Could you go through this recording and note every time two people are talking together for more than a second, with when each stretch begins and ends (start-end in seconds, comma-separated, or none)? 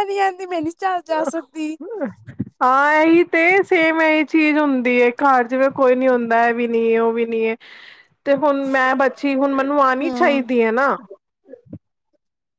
none